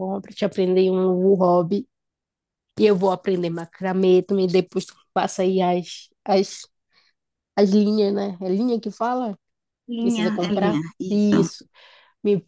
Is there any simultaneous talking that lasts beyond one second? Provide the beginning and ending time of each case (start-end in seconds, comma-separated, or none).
10.0-11.5